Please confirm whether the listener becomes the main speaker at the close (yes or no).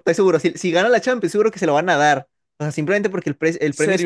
yes